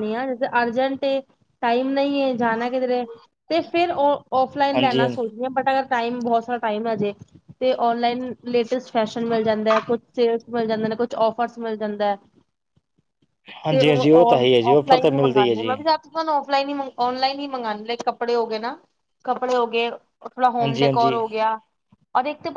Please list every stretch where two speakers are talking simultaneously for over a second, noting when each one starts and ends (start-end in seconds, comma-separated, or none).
none